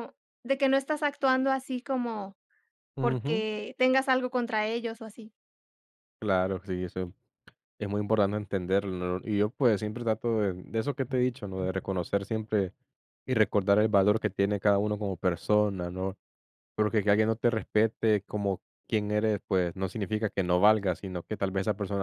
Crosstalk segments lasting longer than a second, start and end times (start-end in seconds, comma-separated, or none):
none